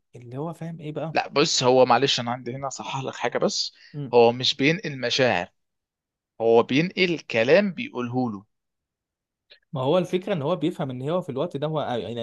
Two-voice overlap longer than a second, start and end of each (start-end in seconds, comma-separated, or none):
none